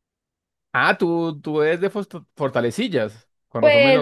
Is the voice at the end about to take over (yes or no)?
yes